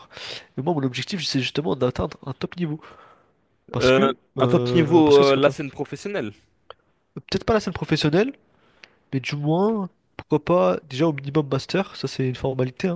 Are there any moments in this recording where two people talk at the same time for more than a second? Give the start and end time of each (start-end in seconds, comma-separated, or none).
3.8-5.5